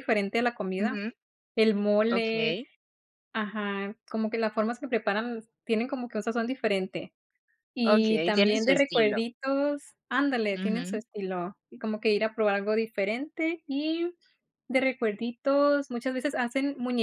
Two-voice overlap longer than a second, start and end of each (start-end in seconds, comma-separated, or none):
7.8-9.2